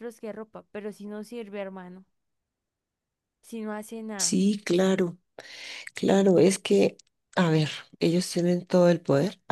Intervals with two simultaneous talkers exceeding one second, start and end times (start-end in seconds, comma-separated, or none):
none